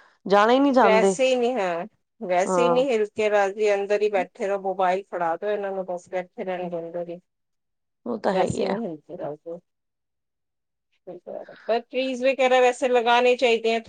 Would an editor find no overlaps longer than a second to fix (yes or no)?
yes